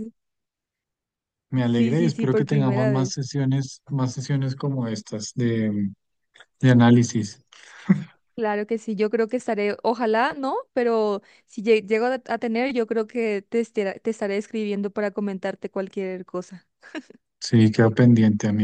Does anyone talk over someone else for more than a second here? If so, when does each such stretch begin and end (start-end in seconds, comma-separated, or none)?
1.7-3.2